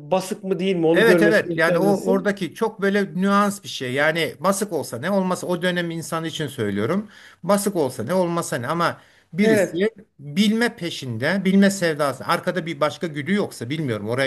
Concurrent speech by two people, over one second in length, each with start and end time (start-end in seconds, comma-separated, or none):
0.9-2.4